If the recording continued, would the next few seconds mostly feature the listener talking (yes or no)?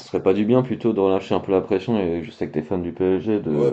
yes